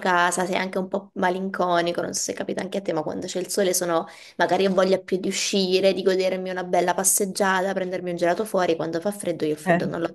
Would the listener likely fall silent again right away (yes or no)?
yes